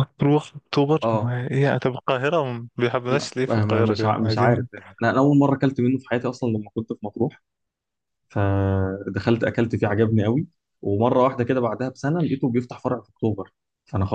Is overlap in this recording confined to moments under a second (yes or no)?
no